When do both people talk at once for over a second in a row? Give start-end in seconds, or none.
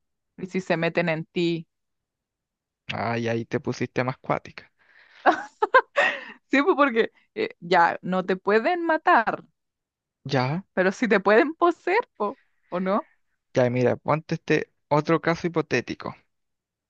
none